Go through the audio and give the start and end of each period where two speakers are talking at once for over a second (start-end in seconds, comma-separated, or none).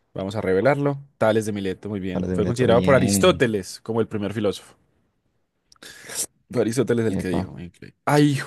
2.1-3.5